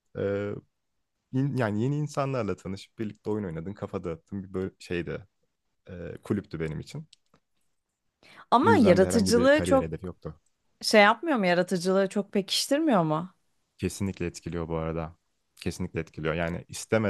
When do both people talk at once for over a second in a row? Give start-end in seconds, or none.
8.6-9.9